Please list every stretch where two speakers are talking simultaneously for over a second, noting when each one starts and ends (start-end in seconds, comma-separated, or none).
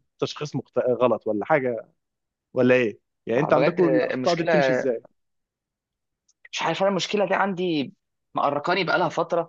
3.4-4.9